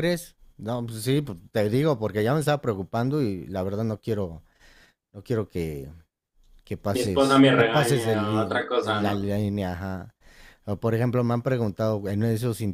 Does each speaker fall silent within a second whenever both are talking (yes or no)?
no